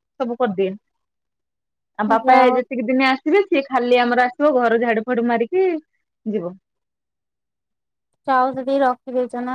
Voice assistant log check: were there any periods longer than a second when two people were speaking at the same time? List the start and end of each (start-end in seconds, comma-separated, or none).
none